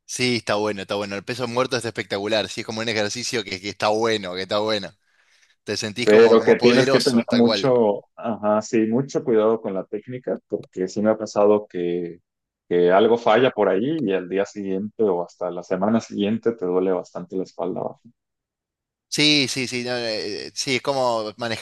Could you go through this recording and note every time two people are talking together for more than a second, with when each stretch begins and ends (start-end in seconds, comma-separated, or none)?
6.0-7.7